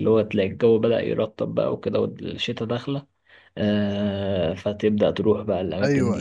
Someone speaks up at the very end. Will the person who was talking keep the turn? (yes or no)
no